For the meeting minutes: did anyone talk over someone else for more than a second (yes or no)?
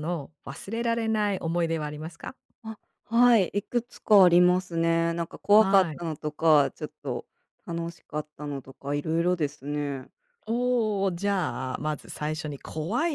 no